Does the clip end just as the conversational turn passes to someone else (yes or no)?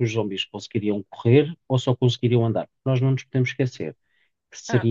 no